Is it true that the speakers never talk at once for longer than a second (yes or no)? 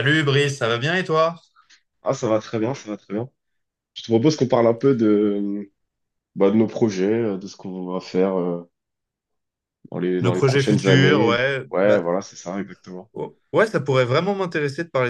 no